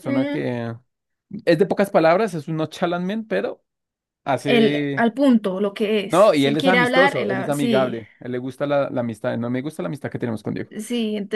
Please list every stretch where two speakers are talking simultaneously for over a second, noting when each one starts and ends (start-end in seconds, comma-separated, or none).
6.1-8.0